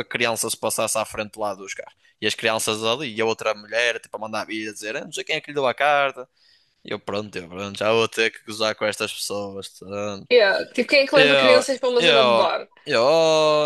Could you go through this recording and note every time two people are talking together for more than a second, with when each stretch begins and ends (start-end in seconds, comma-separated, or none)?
11.1-12.5